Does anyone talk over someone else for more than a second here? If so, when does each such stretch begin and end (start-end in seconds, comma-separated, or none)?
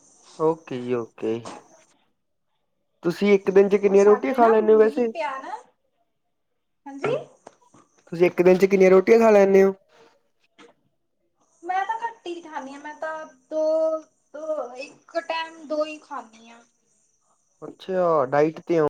3.9-5.1